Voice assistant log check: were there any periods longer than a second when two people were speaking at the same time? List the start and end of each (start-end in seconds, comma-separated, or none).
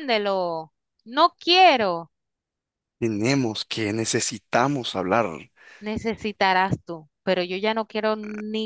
none